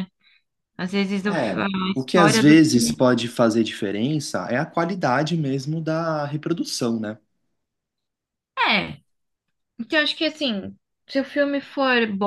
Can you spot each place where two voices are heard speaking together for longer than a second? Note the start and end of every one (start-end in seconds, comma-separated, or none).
1.2-3.1